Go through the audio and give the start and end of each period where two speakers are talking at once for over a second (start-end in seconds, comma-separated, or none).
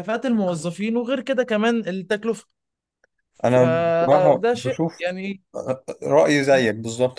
3.4-5.0